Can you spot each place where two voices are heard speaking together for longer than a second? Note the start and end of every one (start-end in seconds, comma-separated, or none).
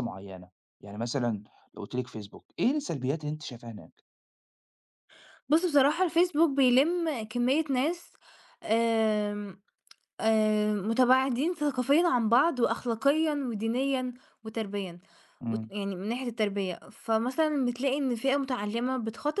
none